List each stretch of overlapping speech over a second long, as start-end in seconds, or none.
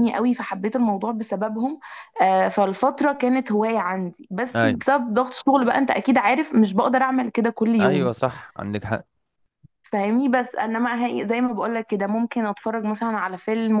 none